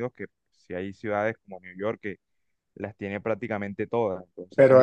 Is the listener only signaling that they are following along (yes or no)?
no